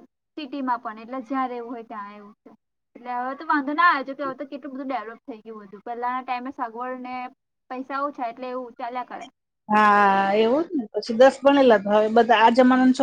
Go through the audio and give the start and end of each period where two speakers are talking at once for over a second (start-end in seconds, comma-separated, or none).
none